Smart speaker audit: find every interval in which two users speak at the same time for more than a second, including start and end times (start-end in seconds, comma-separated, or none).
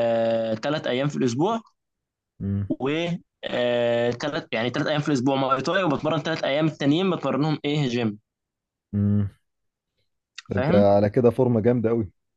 none